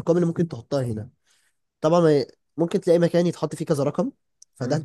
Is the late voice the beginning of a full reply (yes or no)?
no